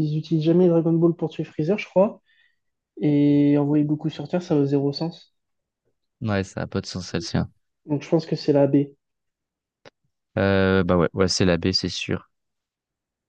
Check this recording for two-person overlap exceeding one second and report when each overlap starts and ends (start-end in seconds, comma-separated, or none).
none